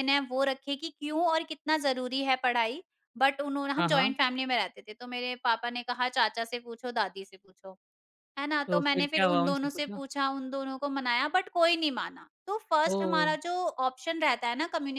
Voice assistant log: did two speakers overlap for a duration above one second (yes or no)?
yes